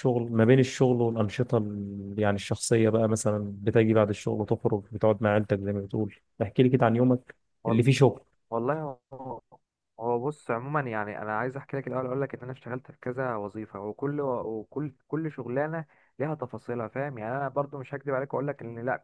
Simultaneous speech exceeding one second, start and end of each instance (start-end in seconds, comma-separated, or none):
none